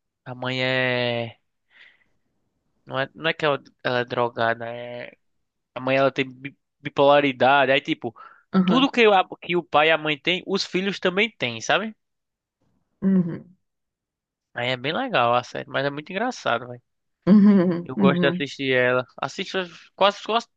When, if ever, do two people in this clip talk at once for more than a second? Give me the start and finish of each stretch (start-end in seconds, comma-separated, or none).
none